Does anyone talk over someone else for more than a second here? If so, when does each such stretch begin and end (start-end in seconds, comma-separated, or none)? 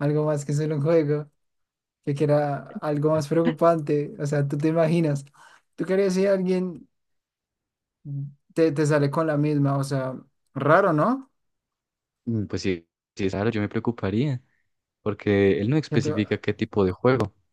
none